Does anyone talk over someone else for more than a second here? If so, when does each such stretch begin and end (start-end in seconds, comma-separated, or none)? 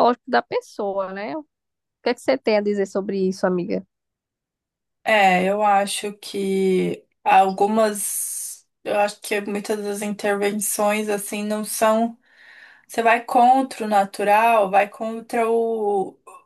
none